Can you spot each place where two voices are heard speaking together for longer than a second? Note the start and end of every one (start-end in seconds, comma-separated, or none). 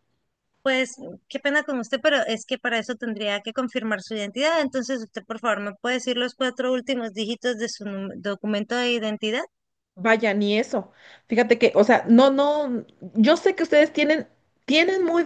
none